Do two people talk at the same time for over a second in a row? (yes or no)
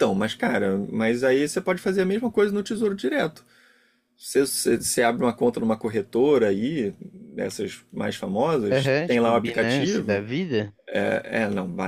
yes